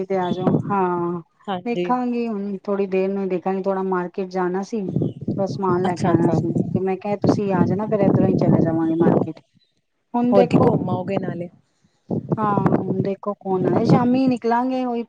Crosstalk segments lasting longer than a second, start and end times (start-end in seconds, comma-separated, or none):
none